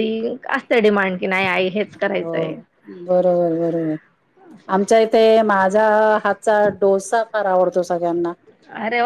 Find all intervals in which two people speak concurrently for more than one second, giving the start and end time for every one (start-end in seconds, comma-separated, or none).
none